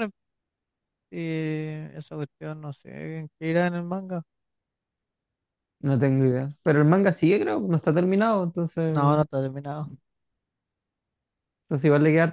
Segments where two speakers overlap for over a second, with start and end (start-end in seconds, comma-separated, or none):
none